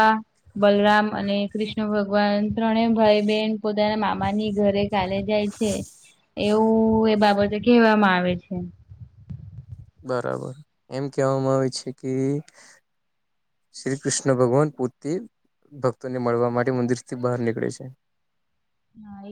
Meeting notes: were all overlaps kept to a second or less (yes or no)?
yes